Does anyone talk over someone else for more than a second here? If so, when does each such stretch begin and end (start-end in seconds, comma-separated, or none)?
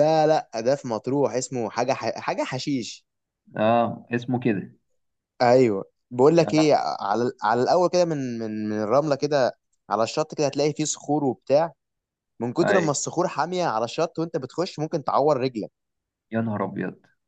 none